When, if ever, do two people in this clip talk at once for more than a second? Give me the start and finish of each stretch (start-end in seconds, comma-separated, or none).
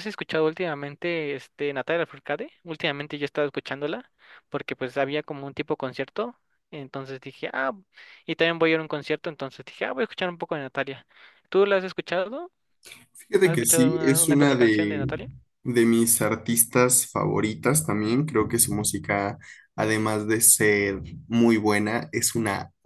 13.4-15.1